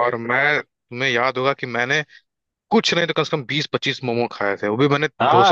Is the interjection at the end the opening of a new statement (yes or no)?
yes